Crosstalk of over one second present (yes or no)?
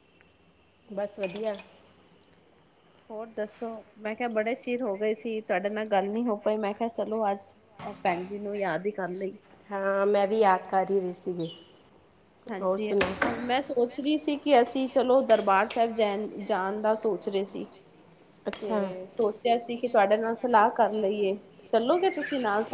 no